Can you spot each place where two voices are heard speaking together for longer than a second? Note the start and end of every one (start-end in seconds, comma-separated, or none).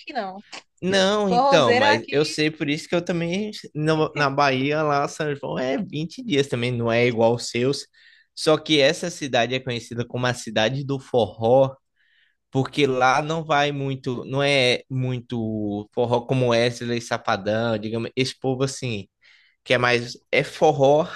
0.9-2.1